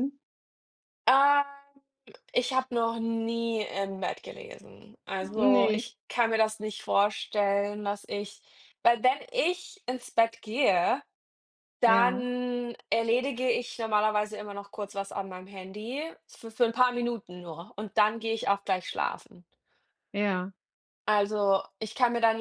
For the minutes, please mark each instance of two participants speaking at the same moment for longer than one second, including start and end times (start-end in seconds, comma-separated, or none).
none